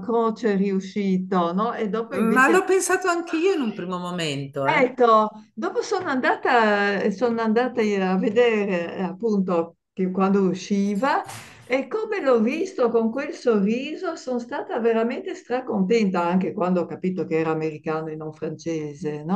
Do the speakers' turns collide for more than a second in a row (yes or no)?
no